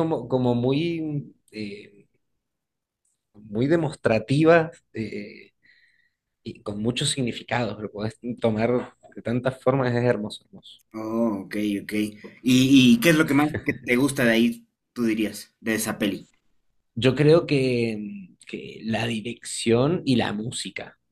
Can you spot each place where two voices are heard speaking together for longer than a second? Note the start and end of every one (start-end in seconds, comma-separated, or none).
none